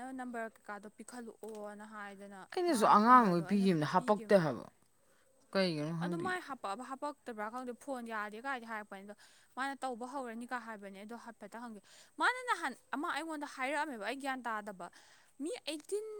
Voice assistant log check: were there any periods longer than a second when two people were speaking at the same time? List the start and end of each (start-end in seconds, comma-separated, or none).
2.5-4.3